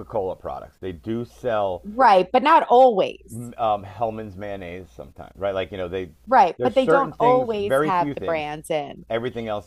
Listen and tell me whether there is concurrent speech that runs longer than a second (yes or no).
yes